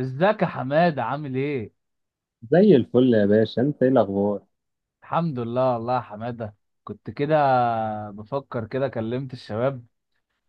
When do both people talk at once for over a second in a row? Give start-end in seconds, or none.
none